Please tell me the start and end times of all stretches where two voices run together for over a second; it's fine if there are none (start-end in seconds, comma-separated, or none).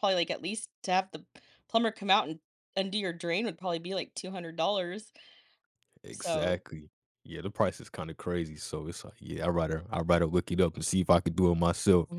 none